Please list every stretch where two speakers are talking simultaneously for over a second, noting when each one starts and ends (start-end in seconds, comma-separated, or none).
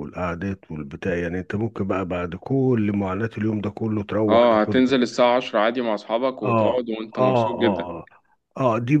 6.4-7.9